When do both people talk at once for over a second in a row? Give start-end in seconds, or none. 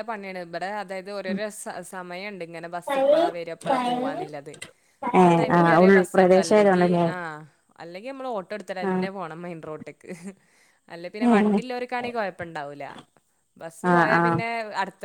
5.2-7.0